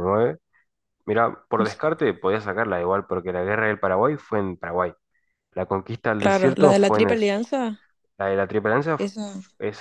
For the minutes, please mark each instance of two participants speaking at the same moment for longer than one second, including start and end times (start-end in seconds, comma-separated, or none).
6.2-7.4